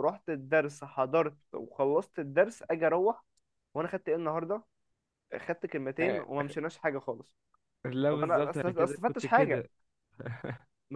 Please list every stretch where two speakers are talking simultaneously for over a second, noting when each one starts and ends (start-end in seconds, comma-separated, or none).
8.1-9.7